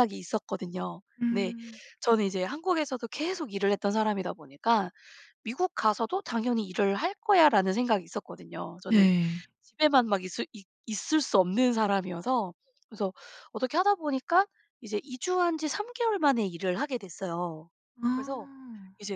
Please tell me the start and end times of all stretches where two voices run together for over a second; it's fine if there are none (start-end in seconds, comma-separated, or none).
none